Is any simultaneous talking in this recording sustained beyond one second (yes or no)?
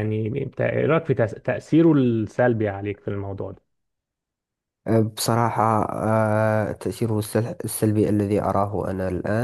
no